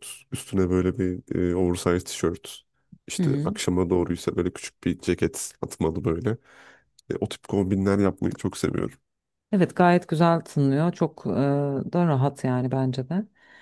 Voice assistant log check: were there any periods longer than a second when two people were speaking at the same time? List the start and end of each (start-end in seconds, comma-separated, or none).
none